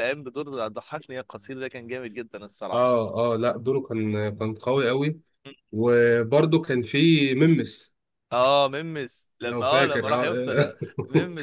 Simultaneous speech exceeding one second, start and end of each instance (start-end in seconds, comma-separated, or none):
9.4-10.7